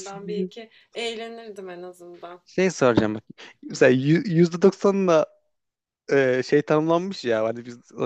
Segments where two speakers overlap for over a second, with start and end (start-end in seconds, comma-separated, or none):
none